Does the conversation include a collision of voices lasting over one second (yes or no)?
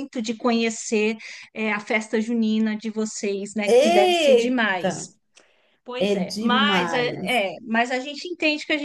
yes